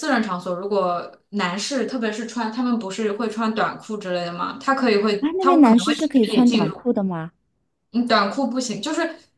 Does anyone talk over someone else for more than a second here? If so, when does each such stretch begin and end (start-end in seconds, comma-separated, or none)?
5.2-6.9